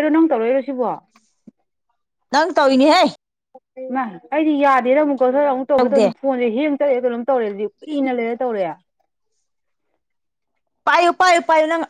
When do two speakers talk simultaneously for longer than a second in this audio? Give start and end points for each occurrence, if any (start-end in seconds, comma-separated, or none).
none